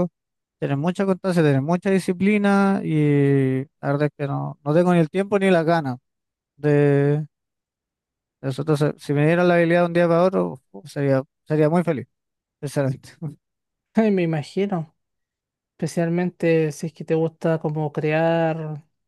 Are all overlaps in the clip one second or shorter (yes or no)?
yes